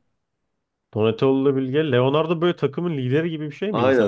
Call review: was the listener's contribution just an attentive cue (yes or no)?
no